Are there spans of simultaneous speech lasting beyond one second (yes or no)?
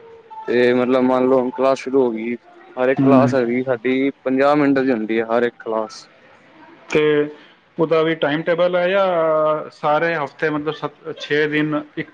no